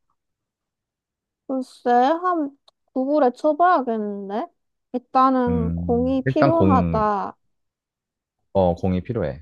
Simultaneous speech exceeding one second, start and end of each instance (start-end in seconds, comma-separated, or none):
5.5-7.0